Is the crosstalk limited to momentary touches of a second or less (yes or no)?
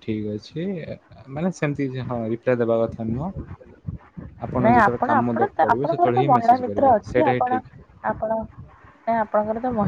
no